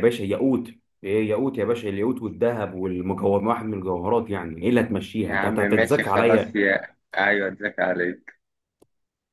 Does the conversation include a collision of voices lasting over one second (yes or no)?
yes